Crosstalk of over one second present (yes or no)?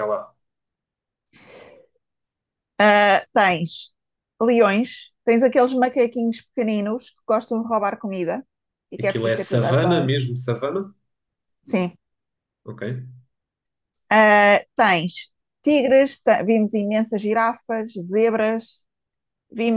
yes